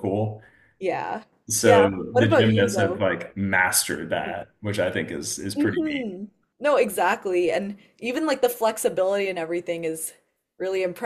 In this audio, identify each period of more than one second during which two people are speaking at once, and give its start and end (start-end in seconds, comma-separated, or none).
1.6-3.1